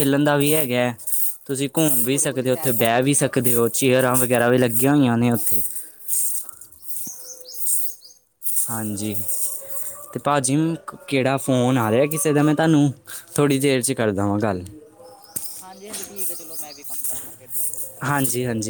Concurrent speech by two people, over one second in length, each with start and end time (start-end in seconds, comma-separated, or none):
1.9-3.5